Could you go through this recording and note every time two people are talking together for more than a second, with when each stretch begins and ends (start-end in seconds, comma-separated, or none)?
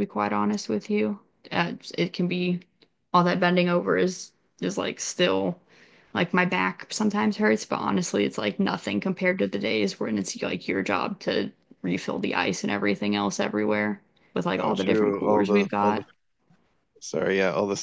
14.6-16.0